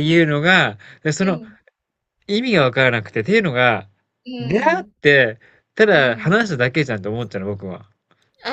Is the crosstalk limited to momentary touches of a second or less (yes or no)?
yes